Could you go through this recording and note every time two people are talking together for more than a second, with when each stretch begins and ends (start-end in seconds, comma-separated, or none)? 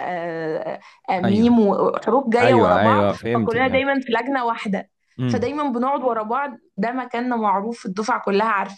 2.4-3.9